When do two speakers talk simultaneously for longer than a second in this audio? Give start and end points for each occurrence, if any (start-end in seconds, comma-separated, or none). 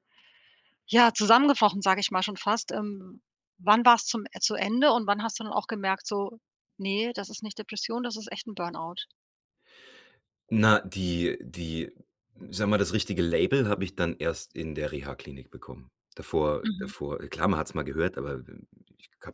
none